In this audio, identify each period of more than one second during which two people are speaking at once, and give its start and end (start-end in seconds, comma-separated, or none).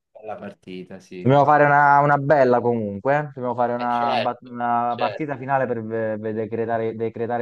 3.8-5.3